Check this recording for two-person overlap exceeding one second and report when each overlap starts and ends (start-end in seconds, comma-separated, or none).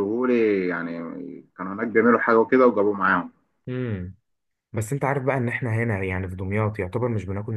none